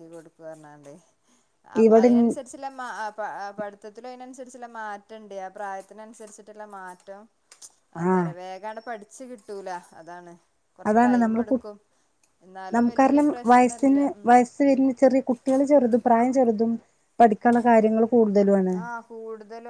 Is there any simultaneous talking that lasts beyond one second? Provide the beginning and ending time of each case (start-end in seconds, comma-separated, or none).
12.7-14.7